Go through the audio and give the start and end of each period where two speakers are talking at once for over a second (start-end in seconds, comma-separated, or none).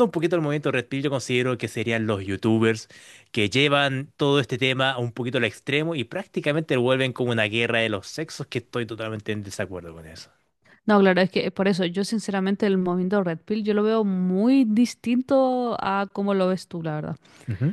none